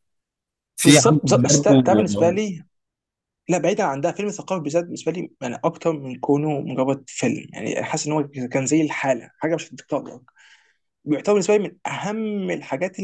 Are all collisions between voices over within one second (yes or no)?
no